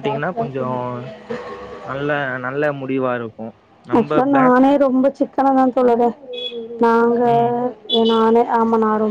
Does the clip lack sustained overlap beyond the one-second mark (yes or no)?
yes